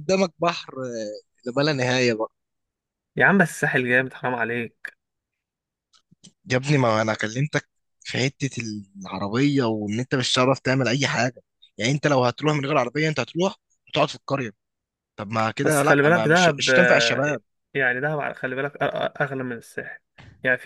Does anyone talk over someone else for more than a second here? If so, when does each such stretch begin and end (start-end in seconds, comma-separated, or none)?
15.6-17.2